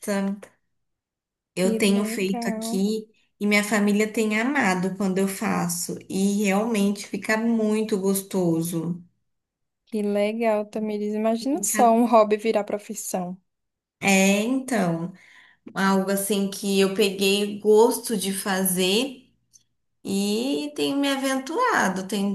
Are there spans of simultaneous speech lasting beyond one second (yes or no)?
yes